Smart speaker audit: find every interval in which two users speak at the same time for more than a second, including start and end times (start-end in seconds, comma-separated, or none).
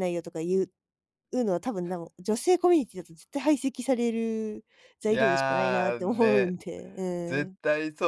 5.1-6.5